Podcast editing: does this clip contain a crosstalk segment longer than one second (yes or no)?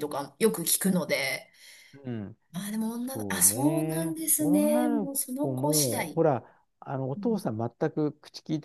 yes